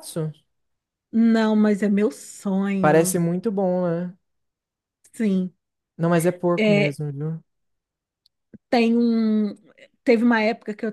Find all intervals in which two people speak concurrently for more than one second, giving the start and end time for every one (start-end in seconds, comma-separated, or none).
none